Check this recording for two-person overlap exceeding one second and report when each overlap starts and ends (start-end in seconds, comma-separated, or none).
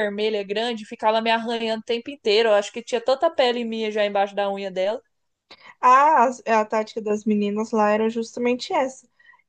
none